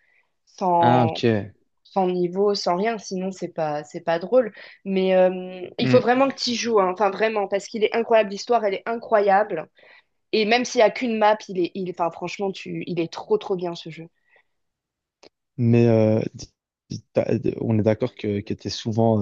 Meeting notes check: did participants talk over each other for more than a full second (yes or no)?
no